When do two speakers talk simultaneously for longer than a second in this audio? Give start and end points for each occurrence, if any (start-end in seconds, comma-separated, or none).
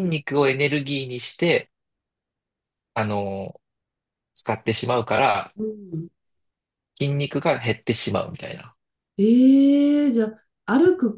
none